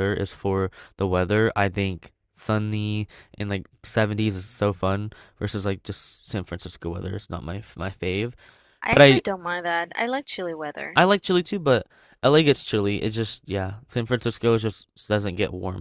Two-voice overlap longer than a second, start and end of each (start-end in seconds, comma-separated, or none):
none